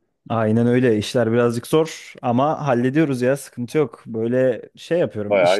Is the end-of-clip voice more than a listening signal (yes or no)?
no